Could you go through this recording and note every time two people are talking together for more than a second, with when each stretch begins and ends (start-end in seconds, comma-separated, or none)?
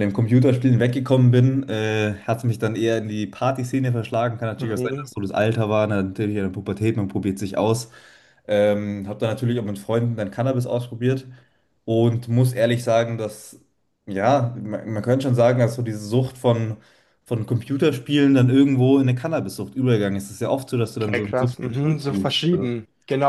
21.0-22.7